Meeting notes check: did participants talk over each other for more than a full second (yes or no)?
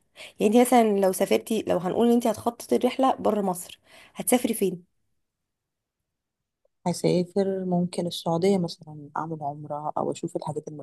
no